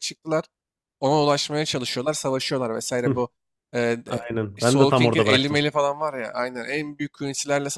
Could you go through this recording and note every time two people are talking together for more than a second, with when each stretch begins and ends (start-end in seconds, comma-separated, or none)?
4.0-5.6